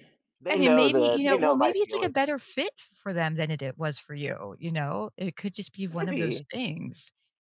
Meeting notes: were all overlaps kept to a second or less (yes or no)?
no